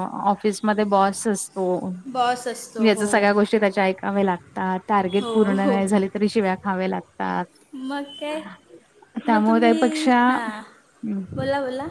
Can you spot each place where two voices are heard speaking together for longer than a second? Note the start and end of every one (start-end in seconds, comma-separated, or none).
none